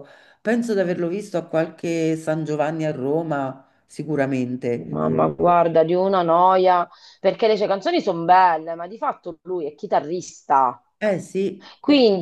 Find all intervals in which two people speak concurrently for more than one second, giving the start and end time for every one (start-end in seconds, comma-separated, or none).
none